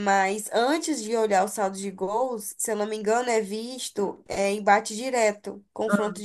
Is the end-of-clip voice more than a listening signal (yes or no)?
no